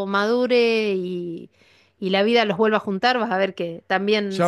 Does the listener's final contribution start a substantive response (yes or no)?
yes